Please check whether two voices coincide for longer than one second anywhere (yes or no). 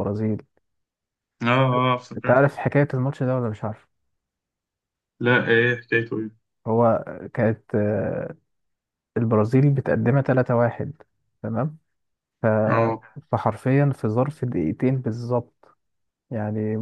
no